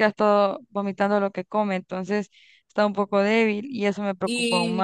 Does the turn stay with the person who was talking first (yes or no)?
no